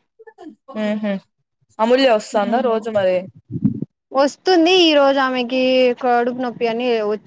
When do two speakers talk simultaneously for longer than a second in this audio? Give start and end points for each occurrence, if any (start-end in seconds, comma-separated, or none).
none